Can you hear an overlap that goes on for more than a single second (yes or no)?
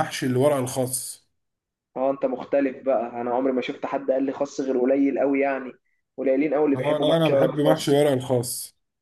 yes